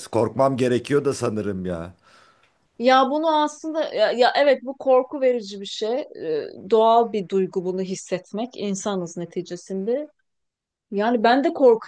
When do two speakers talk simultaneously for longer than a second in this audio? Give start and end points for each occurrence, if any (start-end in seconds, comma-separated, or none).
none